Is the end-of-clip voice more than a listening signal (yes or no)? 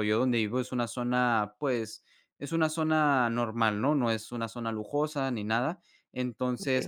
no